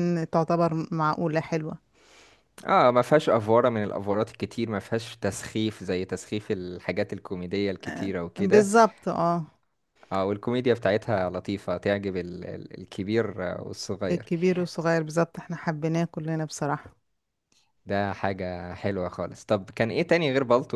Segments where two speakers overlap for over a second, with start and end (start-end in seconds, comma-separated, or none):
none